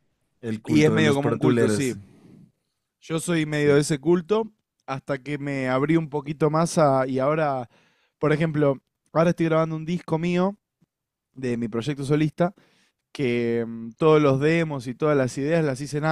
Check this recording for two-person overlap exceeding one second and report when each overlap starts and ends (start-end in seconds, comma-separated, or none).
0.7-1.9